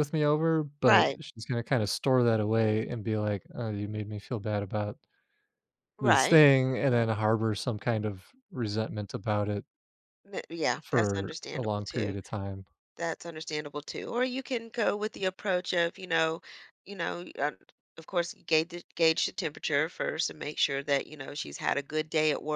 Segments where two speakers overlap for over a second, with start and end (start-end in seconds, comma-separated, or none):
10.8-12.1